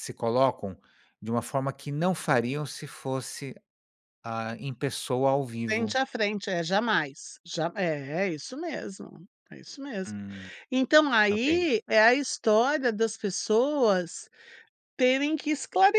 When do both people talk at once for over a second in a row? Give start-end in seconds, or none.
none